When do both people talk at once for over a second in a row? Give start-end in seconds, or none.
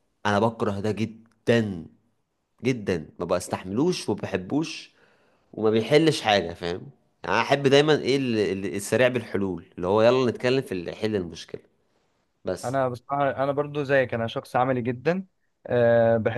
none